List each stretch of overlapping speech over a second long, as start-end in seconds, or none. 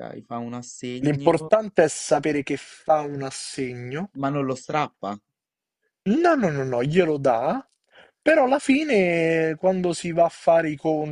none